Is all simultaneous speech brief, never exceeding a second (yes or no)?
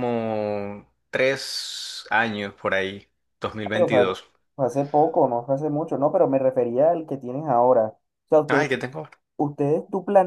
yes